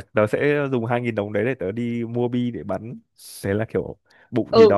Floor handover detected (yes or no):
yes